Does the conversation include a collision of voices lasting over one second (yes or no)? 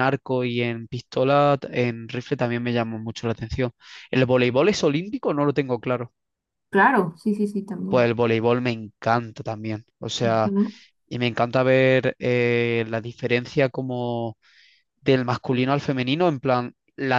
no